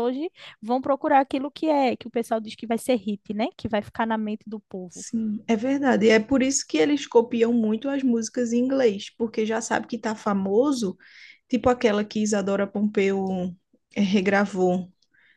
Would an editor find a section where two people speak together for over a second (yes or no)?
no